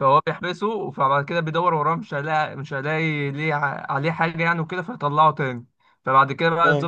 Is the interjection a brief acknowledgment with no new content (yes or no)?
yes